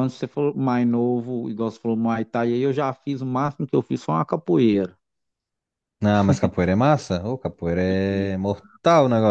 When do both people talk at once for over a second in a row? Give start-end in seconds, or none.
none